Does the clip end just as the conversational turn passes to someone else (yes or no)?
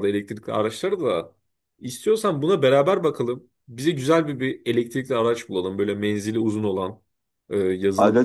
no